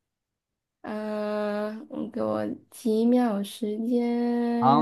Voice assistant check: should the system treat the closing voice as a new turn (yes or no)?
yes